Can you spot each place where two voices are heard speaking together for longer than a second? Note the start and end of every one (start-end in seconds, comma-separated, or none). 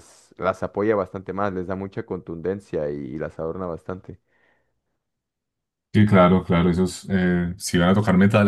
none